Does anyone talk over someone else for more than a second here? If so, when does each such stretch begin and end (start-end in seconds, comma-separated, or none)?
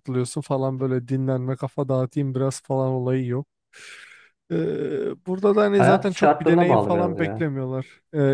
5.8-7.5